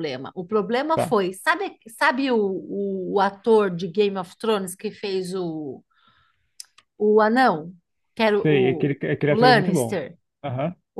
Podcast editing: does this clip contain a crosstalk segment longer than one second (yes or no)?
yes